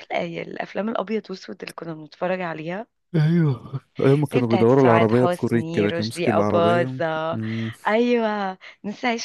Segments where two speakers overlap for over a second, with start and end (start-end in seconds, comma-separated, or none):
4.3-7.4